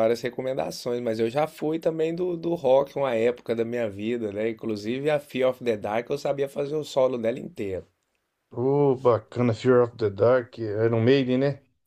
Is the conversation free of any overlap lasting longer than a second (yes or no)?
yes